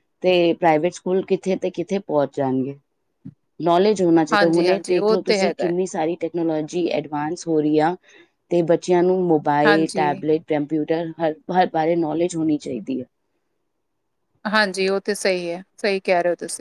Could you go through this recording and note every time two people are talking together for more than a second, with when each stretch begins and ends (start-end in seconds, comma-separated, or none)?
4.3-5.7